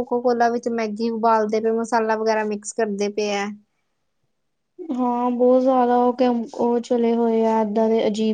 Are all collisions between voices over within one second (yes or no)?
yes